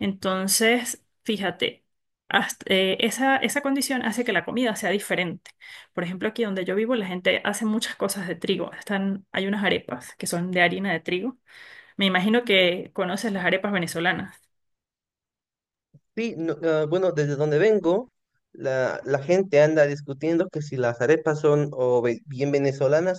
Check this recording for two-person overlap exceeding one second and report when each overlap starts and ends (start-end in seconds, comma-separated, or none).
none